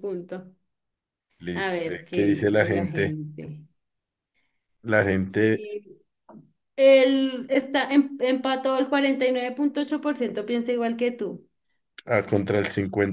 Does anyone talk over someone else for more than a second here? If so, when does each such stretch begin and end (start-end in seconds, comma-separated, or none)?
1.5-3.1